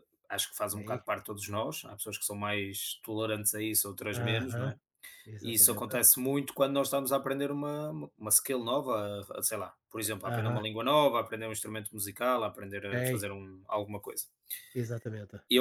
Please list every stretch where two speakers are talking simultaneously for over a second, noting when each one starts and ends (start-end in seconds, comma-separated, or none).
none